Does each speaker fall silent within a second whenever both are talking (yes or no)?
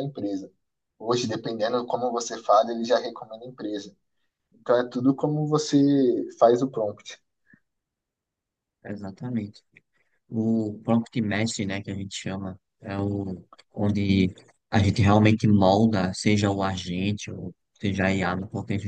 yes